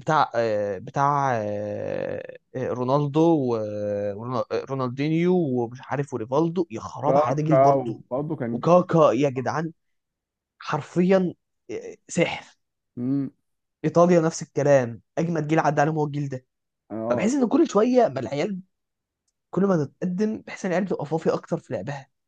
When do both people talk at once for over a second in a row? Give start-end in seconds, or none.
none